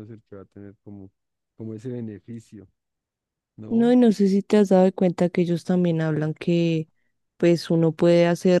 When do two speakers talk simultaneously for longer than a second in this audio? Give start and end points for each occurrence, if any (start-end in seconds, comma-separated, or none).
none